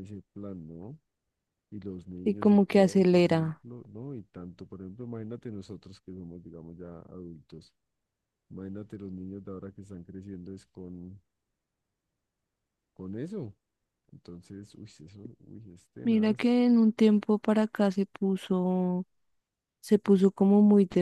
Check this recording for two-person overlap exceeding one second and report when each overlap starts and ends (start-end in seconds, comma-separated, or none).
2.2-3.6